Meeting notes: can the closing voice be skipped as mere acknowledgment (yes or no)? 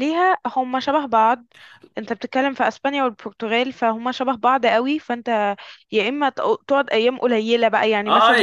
no